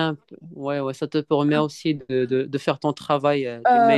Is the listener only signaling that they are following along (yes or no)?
no